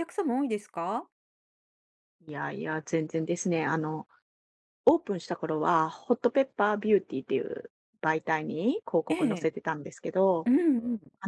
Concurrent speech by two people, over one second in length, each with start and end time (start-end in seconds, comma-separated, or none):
none